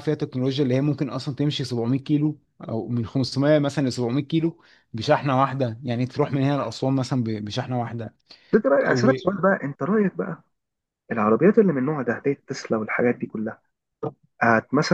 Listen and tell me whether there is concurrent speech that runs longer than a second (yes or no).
no